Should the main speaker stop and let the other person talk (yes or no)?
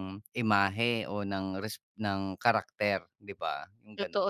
yes